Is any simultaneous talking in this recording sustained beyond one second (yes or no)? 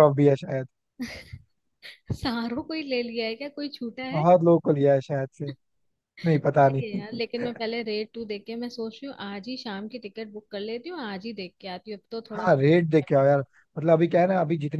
no